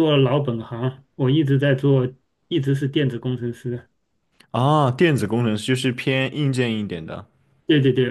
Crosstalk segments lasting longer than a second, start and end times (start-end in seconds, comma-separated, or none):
none